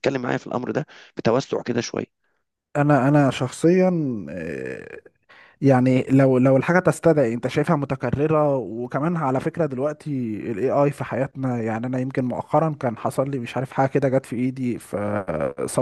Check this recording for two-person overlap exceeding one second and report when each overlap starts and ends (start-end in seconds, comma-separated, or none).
none